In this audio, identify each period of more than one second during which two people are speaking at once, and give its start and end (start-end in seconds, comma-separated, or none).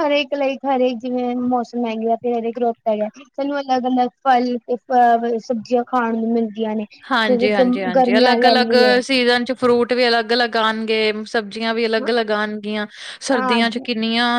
7.3-8.9